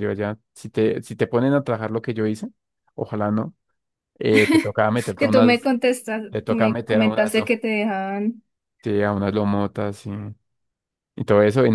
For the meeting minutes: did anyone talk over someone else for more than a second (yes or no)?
yes